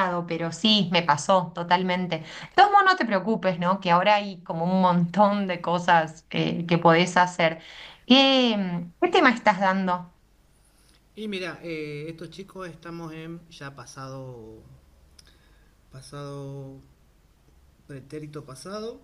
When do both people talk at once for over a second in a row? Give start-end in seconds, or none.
none